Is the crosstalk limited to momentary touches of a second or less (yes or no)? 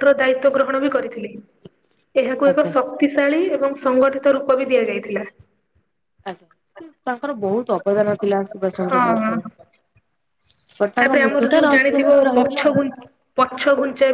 no